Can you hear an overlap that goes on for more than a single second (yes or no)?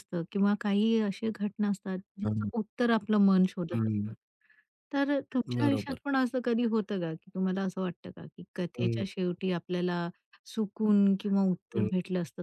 no